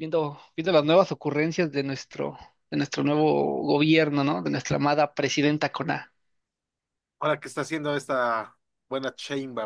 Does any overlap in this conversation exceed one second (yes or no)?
no